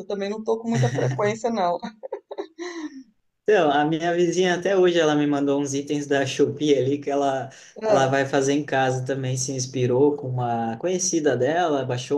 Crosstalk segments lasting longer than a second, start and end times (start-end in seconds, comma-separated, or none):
none